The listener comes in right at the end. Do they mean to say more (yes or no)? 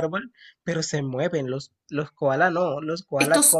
yes